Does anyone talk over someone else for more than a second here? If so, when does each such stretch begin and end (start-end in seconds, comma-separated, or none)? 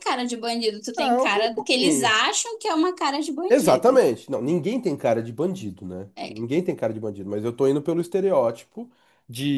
0.9-2.1